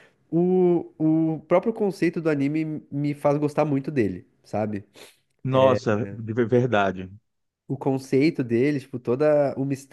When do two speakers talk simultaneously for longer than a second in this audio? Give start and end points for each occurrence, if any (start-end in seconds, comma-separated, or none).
none